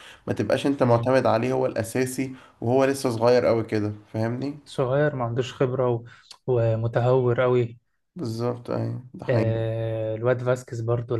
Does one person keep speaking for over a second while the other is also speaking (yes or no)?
no